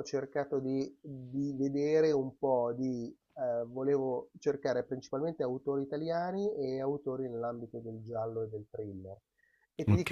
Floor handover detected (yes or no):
no